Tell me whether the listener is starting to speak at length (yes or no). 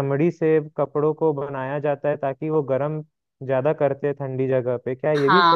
yes